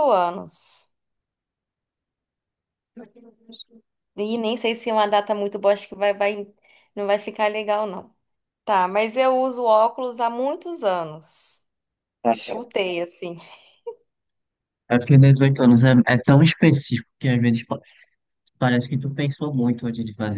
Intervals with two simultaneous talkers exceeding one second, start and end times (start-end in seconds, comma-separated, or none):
none